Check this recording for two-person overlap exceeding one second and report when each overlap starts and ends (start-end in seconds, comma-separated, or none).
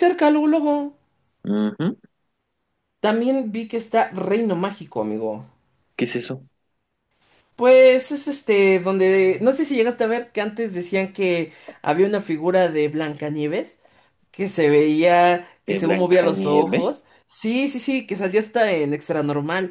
15.6-17.0